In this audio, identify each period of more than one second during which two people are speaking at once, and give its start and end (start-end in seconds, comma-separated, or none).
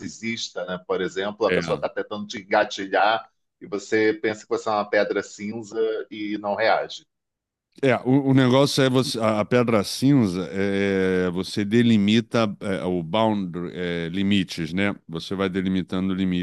none